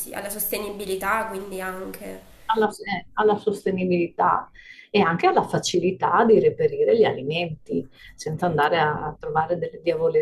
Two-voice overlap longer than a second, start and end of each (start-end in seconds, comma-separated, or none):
none